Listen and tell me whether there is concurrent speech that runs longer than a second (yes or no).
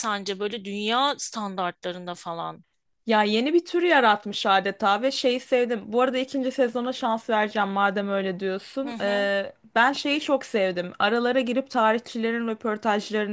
no